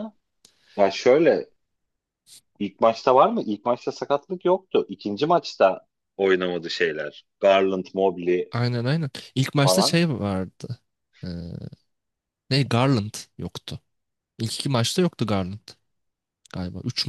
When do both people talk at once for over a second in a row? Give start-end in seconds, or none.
none